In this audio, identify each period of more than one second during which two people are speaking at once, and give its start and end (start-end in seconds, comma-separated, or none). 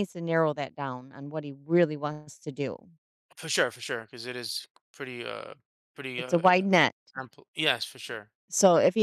none